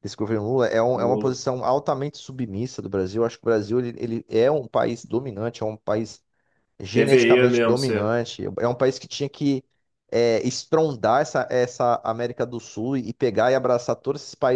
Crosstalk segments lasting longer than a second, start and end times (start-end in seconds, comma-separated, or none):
6.9-8.2